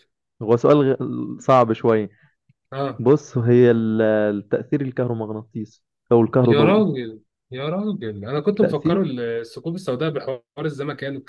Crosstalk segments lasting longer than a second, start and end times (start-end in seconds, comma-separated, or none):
none